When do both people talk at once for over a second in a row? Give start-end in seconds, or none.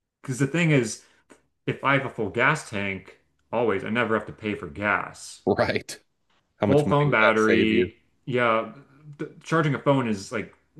6.7-7.9